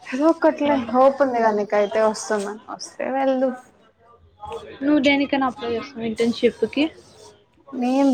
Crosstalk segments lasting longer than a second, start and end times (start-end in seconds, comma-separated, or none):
none